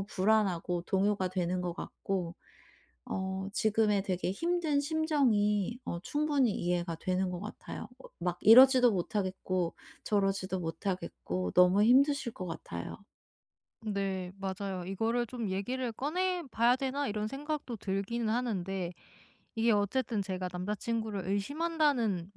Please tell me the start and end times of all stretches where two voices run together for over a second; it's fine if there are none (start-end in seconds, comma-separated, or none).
none